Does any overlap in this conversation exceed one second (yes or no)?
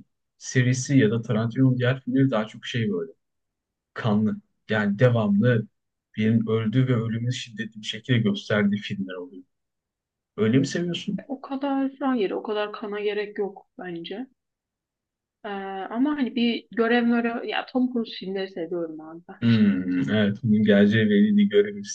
no